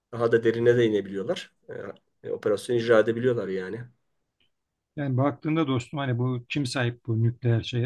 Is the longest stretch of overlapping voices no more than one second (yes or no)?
yes